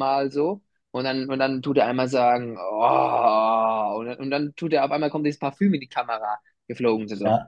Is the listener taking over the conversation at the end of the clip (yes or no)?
yes